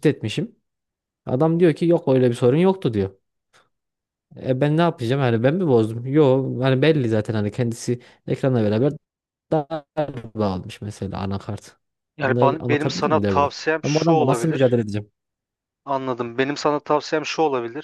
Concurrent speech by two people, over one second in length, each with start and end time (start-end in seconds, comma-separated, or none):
12.2-14.8